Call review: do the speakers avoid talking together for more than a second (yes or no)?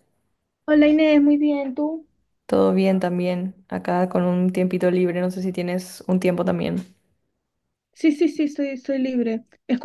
yes